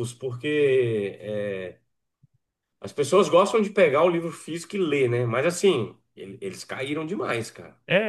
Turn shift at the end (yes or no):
yes